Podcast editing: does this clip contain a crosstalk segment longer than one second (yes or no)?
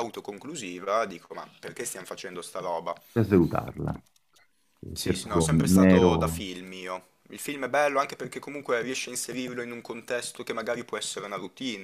yes